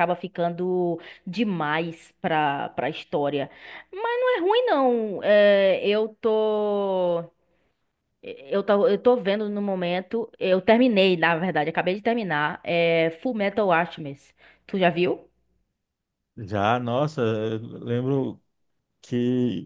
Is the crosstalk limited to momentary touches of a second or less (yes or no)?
yes